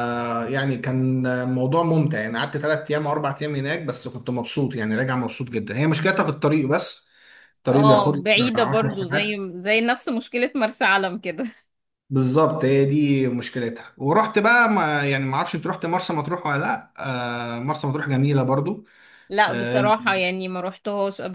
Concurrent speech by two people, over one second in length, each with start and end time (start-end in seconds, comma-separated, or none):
7.7-9.4